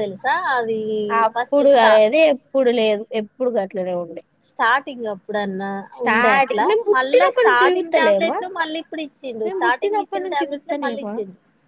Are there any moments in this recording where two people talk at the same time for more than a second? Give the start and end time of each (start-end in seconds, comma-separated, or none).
7.0-8.3, 9.4-11.1